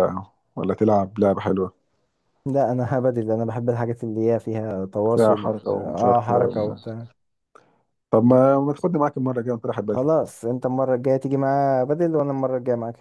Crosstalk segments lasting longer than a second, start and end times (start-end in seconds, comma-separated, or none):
5.1-6.3